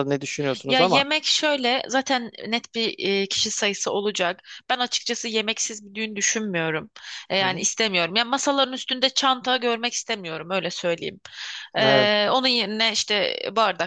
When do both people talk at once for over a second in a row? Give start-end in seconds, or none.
none